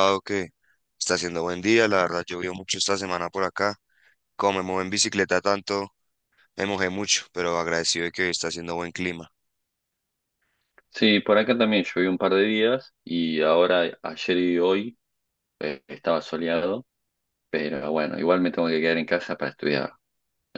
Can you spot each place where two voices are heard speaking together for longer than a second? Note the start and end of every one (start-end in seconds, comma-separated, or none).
none